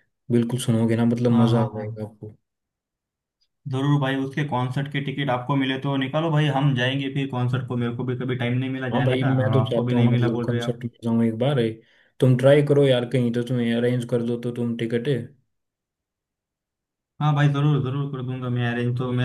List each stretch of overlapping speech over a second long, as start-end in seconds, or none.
8.9-10.8